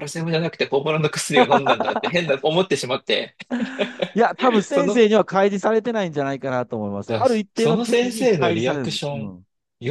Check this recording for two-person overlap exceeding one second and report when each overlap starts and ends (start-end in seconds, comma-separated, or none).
7.1-9.3